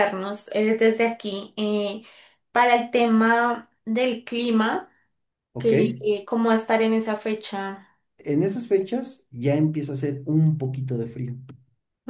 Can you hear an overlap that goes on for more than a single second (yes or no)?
no